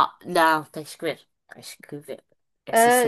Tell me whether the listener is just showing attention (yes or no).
no